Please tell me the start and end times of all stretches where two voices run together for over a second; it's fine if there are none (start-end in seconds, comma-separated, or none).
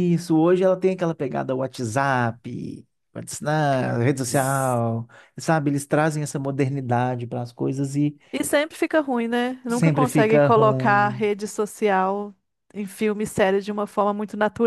9.7-11.2